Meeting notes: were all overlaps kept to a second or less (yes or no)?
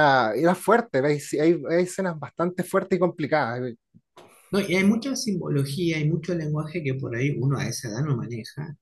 yes